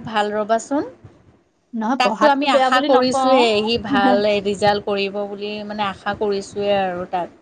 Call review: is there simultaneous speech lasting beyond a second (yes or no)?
yes